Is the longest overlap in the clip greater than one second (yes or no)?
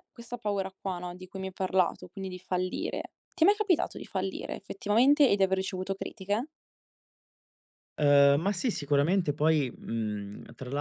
no